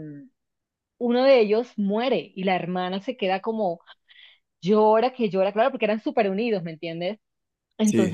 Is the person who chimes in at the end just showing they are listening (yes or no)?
yes